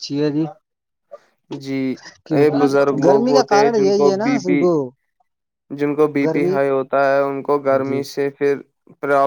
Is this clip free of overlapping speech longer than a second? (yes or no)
no